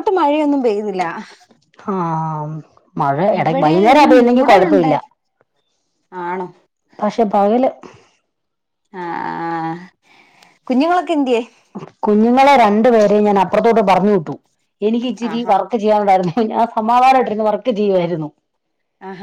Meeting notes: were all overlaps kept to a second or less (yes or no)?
no